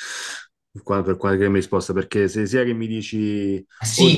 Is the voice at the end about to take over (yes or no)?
yes